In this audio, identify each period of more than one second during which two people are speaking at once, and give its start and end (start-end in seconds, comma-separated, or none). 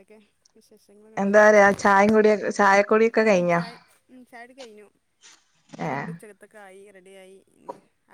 none